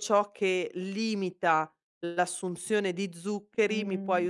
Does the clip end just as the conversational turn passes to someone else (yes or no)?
no